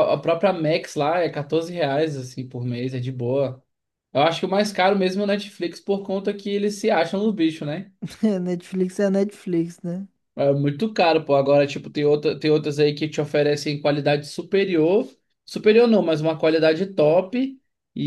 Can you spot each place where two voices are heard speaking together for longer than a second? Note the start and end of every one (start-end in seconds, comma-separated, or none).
none